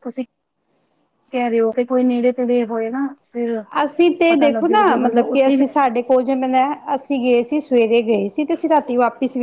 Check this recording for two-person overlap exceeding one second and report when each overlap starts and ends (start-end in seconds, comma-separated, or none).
4.3-5.9